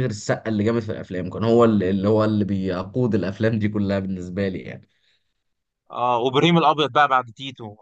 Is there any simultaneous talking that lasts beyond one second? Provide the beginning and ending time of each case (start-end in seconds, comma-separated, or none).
none